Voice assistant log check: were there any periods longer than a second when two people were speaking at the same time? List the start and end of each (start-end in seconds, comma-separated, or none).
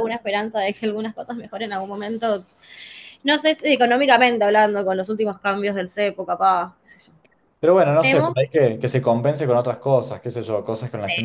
none